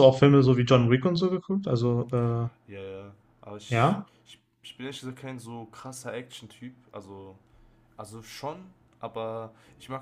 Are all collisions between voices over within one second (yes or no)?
yes